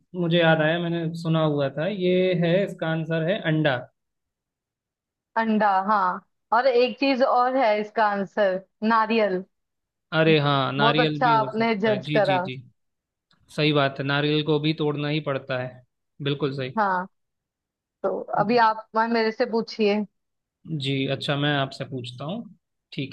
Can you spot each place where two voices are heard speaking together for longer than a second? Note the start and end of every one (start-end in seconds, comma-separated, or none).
10.8-12.4